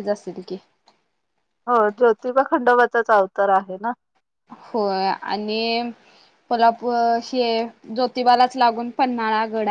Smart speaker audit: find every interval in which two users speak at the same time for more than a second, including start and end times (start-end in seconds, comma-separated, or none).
none